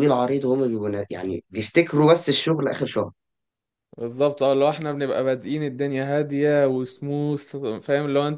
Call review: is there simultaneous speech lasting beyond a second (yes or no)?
no